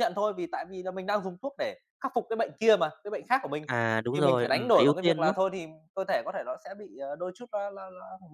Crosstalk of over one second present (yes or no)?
yes